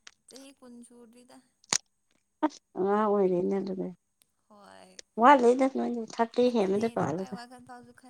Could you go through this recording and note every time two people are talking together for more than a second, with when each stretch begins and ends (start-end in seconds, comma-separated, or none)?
none